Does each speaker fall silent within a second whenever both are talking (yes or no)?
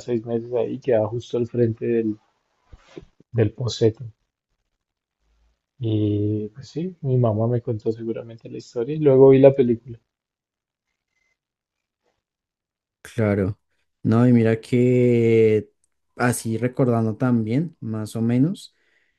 yes